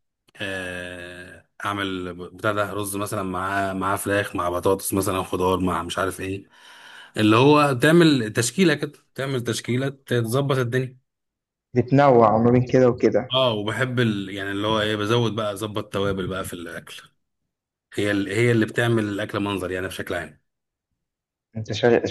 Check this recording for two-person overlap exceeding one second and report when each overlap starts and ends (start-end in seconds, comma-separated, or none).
none